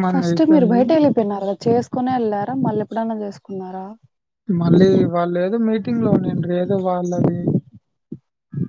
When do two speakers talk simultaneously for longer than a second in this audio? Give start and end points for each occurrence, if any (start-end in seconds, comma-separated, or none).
none